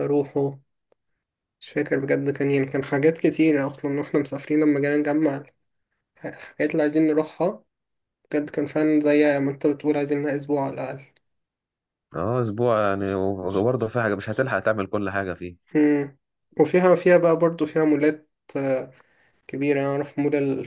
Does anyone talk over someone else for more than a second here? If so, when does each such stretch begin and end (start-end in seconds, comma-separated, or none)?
none